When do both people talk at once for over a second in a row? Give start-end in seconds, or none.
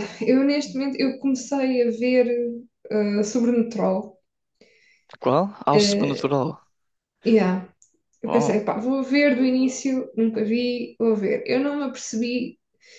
none